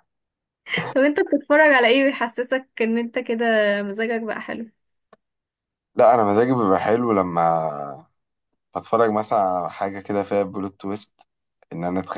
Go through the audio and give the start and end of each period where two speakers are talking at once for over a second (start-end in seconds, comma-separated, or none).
none